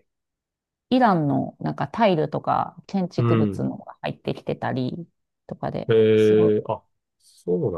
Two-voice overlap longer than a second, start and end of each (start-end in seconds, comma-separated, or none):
none